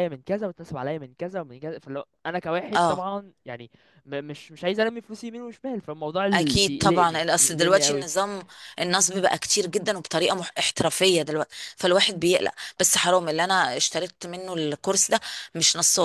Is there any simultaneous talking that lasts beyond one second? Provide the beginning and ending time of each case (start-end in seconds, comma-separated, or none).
6.3-8.1